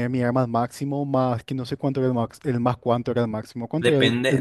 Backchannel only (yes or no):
no